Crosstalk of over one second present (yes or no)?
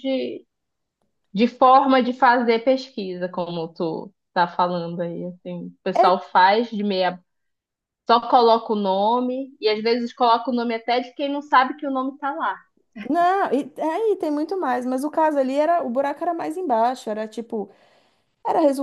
no